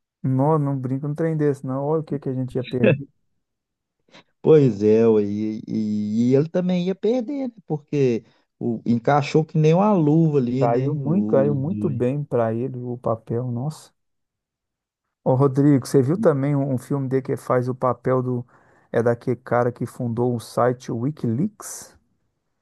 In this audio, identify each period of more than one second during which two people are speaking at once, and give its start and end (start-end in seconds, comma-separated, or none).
10.6-12.0